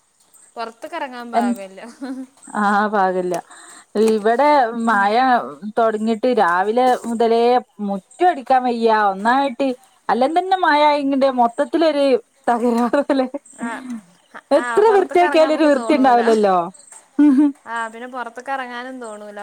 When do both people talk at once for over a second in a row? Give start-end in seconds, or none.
14.6-16.2